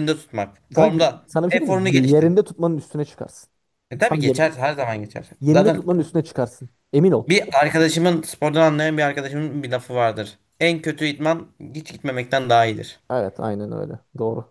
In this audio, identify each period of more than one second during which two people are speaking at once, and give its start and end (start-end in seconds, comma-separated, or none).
0.8-2.3